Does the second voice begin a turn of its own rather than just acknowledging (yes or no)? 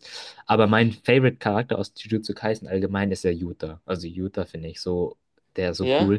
no